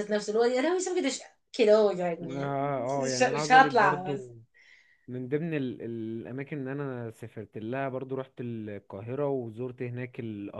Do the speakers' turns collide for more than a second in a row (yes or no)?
yes